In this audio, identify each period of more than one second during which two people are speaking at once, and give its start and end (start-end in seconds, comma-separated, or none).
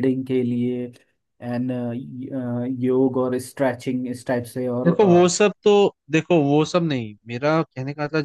none